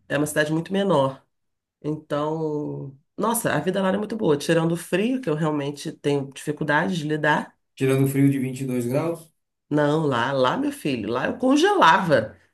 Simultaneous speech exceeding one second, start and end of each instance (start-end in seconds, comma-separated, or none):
none